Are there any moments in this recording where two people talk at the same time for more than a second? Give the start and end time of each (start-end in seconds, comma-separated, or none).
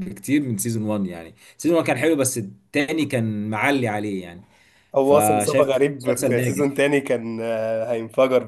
5.0-6.8